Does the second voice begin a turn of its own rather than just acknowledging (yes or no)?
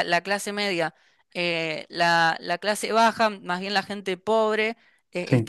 no